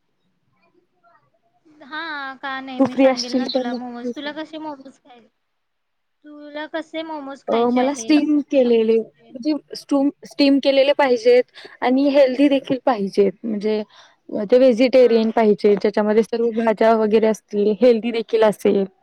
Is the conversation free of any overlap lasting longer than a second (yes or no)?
no